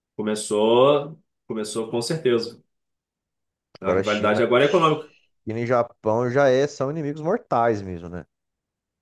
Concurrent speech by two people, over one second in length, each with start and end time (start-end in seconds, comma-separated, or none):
3.8-5.1